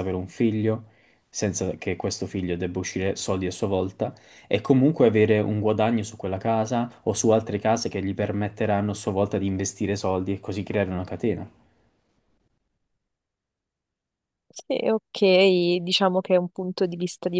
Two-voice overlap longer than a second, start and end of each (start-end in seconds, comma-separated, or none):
none